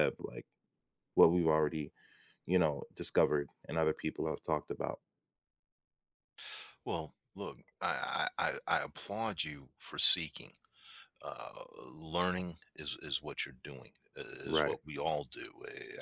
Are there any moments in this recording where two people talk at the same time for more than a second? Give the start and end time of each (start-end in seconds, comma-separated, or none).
none